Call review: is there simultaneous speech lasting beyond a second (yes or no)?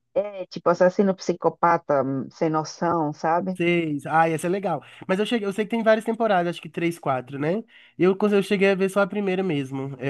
no